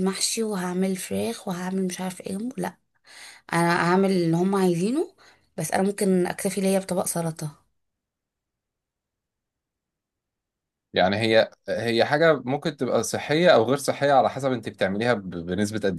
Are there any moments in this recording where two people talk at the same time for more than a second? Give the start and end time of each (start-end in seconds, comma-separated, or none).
none